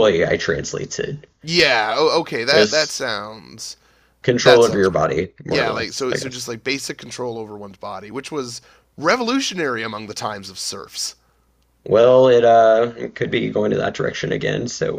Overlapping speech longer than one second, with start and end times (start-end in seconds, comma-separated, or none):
4.4-6.5